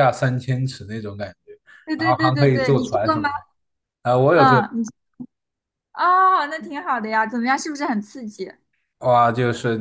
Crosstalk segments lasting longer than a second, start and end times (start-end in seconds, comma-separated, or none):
2.0-3.2